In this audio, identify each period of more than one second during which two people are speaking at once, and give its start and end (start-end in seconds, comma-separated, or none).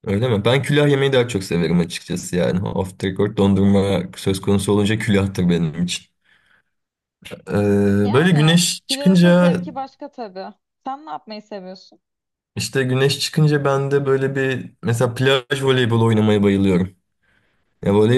8.1-9.5